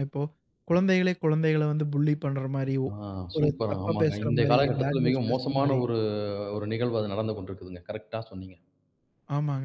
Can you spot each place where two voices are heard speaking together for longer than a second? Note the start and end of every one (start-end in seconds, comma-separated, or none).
3.4-5.8